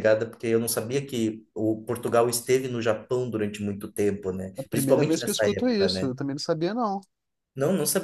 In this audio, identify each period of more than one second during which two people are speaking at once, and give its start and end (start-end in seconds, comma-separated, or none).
4.6-6.1